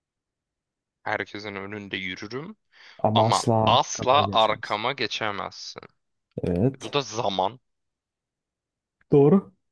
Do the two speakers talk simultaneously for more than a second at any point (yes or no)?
yes